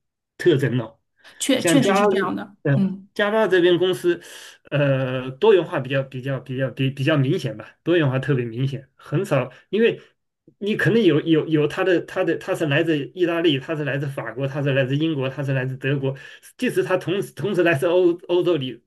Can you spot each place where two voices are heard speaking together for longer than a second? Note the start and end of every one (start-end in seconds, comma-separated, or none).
none